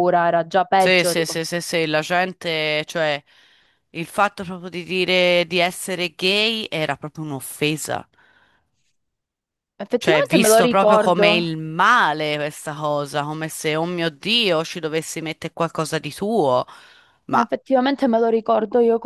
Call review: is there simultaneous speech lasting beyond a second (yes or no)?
yes